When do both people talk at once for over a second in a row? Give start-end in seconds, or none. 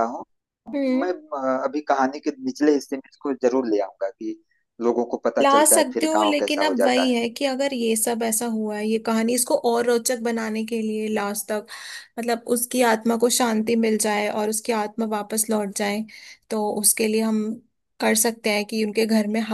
5.4-7.2